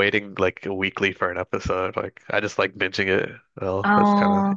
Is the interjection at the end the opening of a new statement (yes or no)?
yes